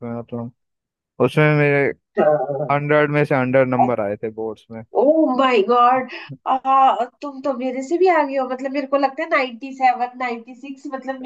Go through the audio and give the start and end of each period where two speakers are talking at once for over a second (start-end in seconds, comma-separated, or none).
none